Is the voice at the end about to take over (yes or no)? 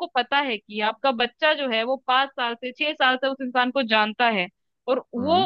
no